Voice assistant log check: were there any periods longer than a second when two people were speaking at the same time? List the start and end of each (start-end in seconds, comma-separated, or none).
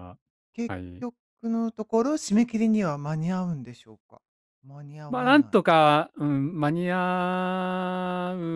none